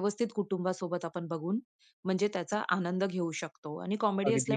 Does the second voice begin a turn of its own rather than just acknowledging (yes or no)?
no